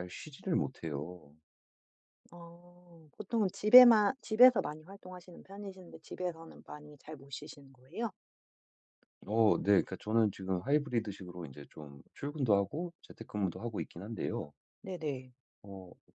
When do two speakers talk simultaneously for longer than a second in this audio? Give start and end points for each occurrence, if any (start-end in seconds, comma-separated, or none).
none